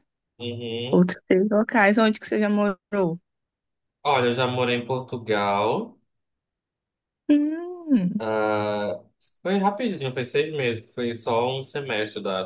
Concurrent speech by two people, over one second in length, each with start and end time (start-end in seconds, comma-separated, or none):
none